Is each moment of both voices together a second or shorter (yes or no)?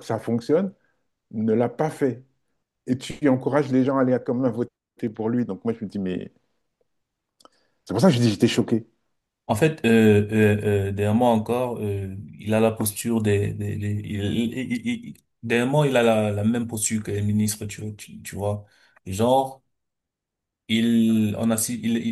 yes